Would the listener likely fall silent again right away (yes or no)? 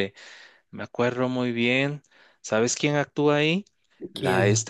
yes